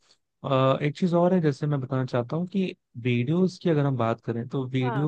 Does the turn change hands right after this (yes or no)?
no